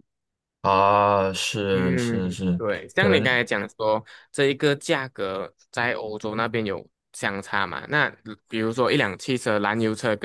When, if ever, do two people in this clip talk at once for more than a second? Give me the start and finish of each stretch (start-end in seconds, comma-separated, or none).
1.7-3.4